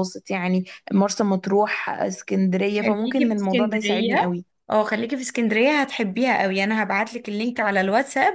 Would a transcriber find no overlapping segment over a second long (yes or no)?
no